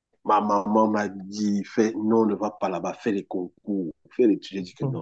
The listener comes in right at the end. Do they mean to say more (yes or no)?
no